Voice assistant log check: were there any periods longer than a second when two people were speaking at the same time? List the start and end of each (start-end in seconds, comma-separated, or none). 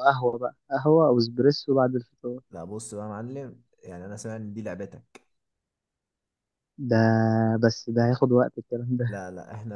none